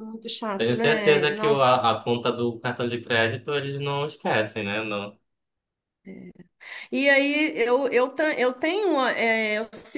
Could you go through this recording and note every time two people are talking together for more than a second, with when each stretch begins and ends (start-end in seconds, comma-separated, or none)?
0.6-1.8